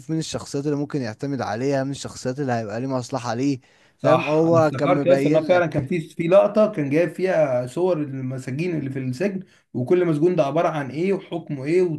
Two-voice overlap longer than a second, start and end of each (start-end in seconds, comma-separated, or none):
4.0-5.9